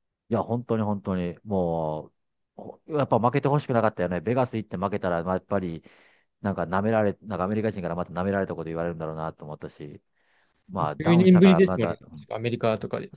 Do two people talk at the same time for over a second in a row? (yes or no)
yes